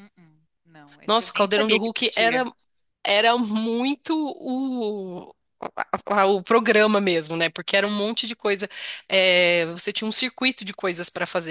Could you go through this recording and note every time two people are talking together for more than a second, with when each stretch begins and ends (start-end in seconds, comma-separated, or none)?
1.0-2.4